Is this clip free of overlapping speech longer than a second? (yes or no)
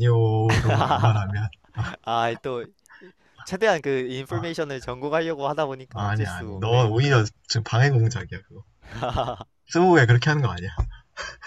no